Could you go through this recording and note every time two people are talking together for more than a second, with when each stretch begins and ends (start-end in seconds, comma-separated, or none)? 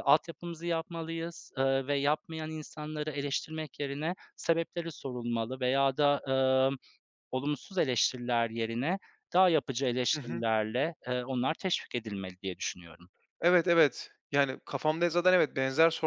none